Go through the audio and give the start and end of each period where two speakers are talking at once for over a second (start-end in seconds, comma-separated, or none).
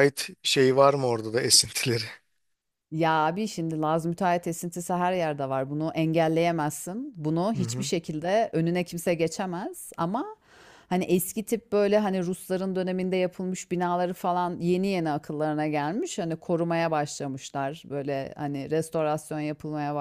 none